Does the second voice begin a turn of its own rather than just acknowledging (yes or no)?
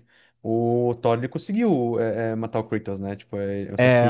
no